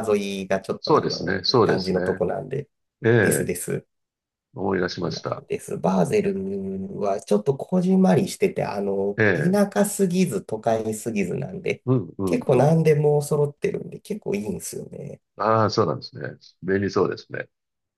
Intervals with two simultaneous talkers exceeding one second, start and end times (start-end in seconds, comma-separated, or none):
0.8-2.2